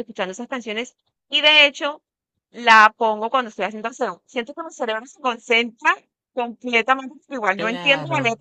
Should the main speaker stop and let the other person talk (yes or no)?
no